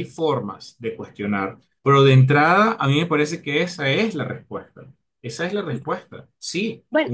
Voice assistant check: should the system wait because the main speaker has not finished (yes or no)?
no